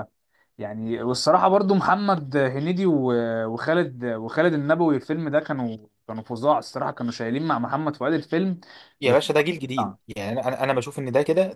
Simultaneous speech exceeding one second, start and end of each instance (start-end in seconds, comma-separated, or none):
none